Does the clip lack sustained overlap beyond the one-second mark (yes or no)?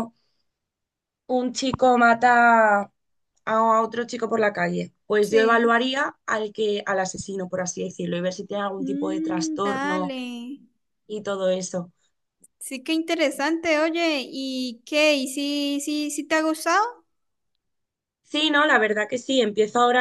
no